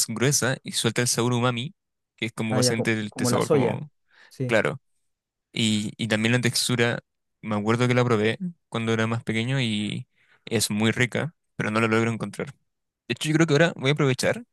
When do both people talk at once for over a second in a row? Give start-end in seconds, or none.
2.5-3.8